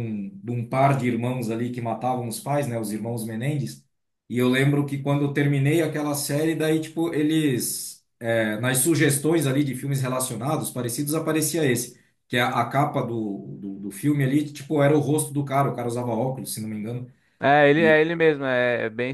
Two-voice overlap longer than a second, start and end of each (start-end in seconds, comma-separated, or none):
none